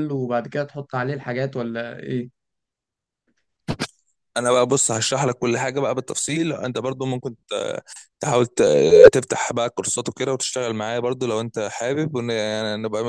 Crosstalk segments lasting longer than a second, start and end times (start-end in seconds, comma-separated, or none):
none